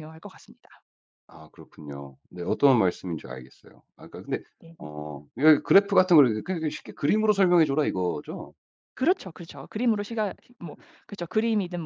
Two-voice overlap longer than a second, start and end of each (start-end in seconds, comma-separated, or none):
none